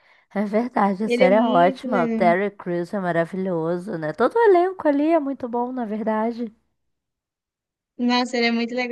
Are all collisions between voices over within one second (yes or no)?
no